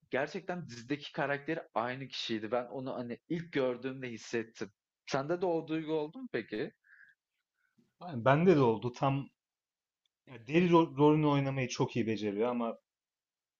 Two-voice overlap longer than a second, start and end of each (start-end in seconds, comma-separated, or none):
none